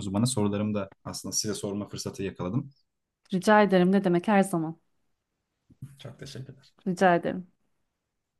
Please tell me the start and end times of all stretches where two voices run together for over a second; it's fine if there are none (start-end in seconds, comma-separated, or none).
none